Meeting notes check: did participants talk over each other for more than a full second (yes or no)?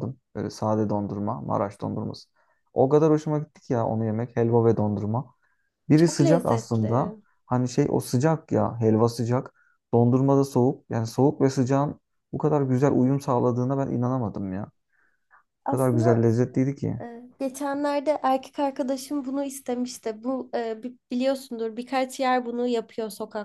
yes